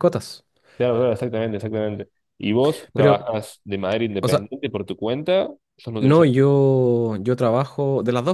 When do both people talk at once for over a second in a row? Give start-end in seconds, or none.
none